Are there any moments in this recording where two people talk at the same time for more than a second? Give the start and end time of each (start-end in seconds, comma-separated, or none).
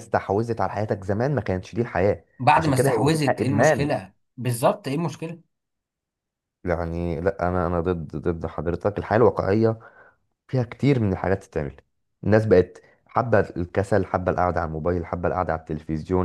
2.4-3.9